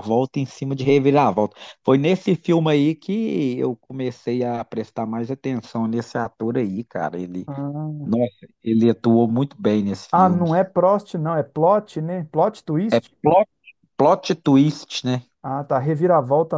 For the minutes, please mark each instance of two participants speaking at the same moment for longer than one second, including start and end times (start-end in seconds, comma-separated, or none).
none